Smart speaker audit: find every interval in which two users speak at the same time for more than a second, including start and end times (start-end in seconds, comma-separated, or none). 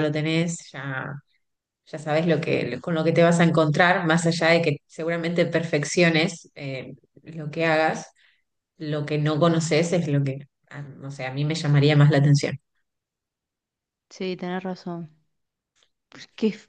none